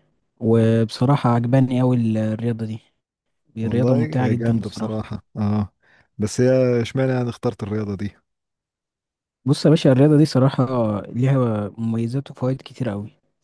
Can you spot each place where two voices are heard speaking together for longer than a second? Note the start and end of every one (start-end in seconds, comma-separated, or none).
3.6-5.1